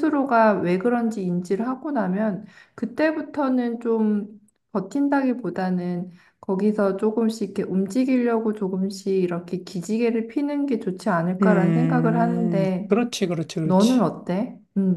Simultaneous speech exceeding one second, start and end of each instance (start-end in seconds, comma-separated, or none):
11.4-12.9